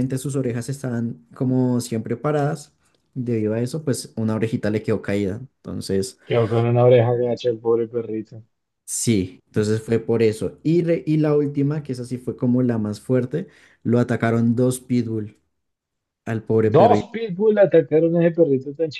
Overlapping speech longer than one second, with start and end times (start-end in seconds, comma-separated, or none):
none